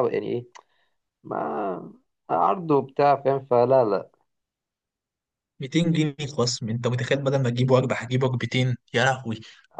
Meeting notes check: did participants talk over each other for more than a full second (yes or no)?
no